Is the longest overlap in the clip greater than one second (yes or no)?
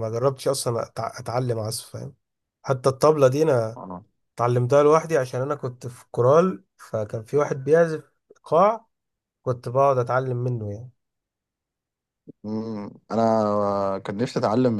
no